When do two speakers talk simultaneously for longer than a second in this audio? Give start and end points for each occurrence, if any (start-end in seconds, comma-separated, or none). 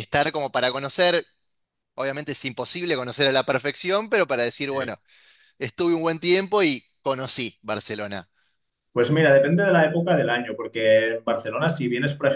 none